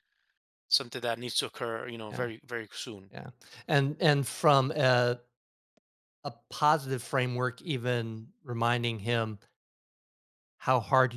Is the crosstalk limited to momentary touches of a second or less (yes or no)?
yes